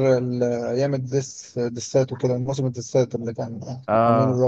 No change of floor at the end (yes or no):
no